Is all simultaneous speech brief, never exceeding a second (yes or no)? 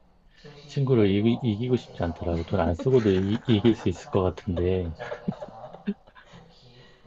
no